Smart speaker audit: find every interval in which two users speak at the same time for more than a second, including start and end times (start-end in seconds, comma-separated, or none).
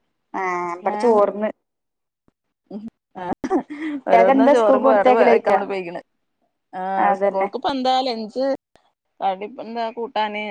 4.1-5.6